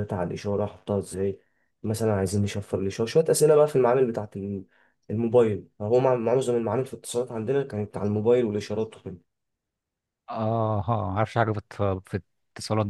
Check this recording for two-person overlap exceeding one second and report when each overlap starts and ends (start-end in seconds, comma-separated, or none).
none